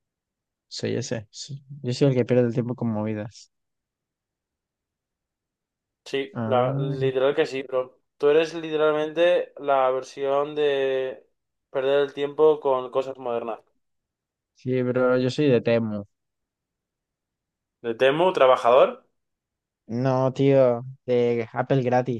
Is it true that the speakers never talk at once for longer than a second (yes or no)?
yes